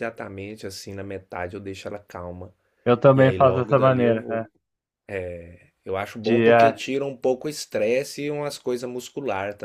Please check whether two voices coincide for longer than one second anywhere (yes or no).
yes